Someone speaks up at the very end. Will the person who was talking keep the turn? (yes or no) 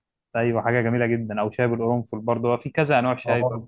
no